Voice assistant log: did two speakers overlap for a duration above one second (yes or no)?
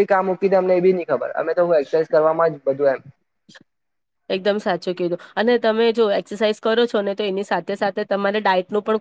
no